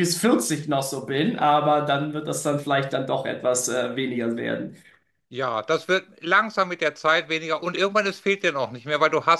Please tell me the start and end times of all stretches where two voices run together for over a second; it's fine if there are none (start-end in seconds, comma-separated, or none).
none